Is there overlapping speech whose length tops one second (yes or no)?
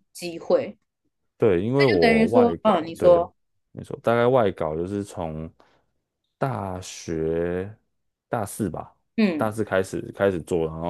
yes